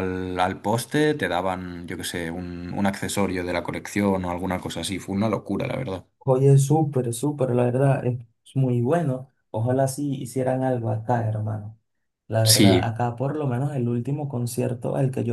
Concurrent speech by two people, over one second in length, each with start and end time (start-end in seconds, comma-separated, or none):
none